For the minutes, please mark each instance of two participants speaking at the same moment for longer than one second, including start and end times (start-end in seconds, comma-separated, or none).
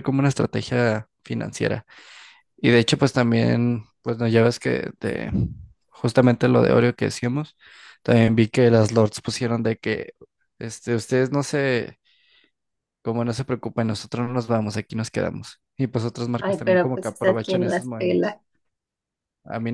16.4-18.4